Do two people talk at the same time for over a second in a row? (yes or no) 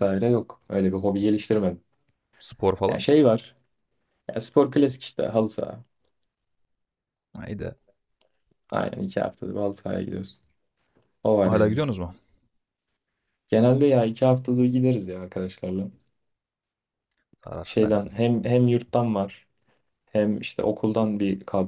no